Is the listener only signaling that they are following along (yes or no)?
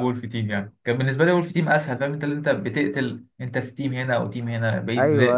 no